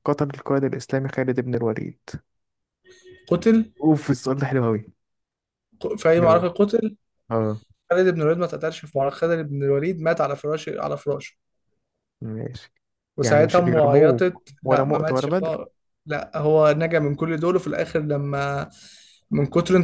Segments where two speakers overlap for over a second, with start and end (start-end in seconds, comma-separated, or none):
13.2-15.6